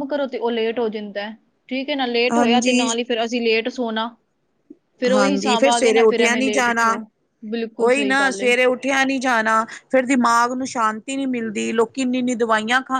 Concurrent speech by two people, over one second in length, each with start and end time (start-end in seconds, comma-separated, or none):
5.1-6.9